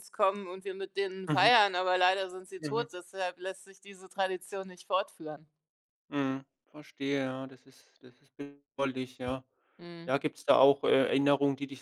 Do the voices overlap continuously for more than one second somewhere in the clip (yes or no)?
no